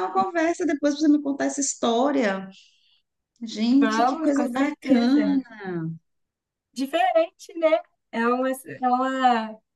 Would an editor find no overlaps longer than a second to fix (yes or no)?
no